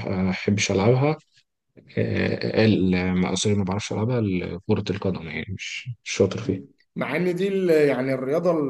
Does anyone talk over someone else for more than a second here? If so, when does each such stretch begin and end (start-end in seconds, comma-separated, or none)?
none